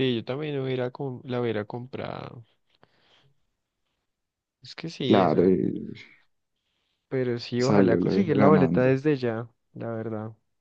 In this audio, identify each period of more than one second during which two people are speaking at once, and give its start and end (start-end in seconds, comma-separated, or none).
7.6-9.0